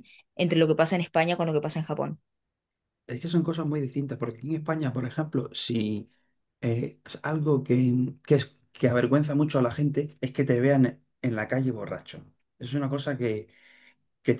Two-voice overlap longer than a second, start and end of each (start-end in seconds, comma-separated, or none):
none